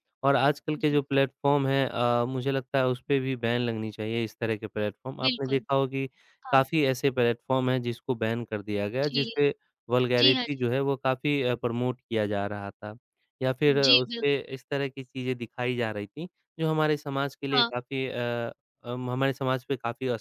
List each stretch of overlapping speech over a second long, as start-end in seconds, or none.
none